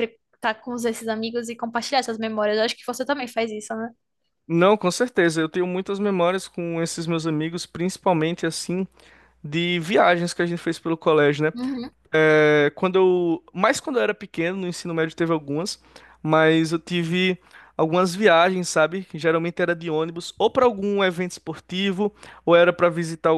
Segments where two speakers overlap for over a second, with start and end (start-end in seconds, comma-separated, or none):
none